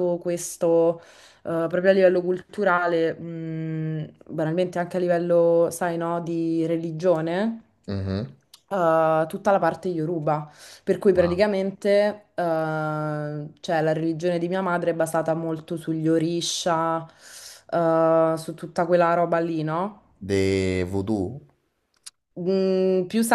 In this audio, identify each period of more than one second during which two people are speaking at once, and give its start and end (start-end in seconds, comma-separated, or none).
none